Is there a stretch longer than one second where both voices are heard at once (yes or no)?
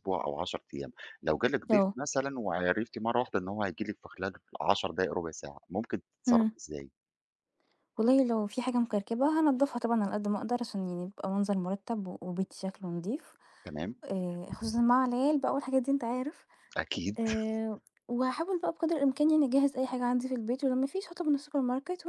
no